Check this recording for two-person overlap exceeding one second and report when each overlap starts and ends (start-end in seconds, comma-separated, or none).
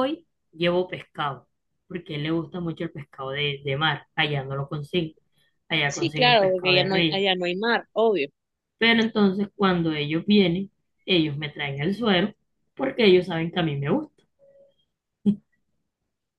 5.9-7.2